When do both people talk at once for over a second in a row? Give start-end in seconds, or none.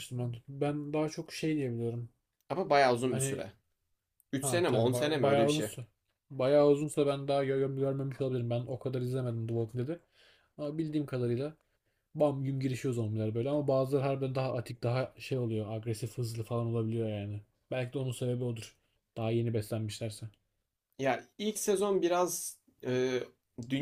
4.4-5.7